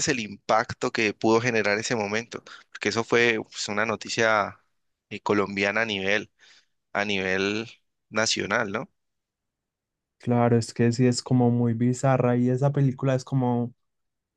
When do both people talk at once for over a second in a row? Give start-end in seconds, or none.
none